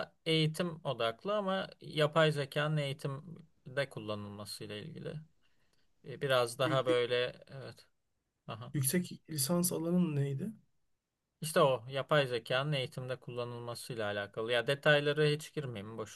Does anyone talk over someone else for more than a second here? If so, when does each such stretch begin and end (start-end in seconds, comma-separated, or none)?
none